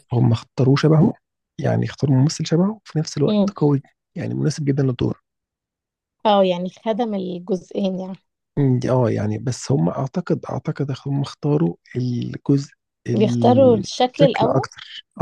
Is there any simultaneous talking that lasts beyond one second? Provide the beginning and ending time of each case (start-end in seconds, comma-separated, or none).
13.1-14.7